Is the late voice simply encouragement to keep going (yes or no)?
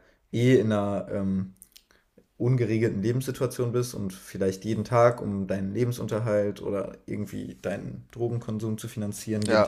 yes